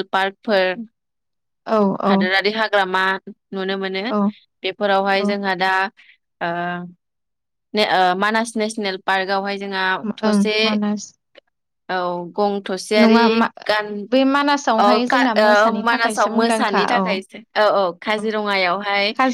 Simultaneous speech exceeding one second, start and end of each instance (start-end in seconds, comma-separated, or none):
14.8-17.1